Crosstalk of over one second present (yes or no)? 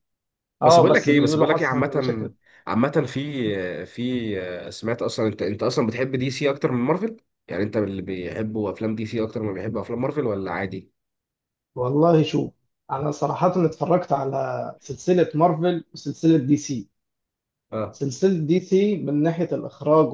yes